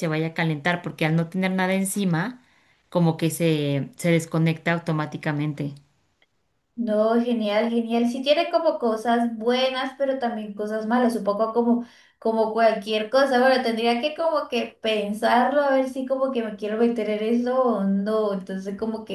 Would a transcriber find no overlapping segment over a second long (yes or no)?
yes